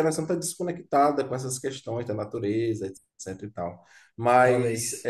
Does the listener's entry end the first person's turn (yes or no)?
no